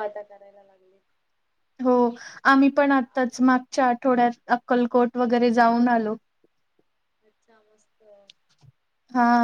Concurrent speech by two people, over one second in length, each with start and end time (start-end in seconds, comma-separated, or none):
none